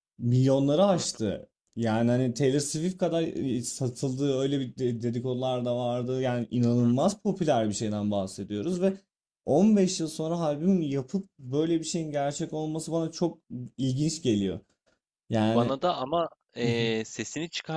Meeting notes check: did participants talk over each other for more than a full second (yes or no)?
no